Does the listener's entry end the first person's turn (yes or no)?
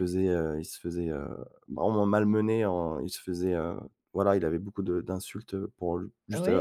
yes